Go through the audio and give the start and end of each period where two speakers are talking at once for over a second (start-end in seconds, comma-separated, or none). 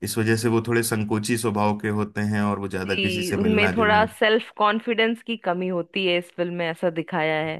2.8-4.1